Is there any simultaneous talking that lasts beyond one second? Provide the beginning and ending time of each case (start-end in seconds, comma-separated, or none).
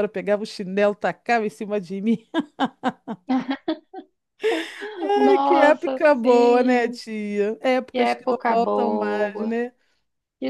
5.1-7.0, 7.9-9.6